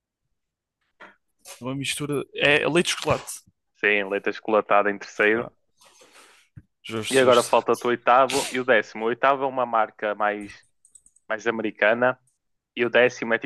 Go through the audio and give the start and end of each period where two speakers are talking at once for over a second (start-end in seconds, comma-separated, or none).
none